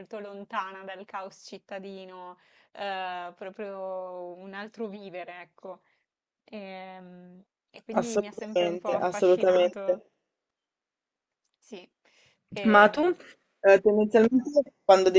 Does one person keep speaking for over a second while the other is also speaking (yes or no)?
yes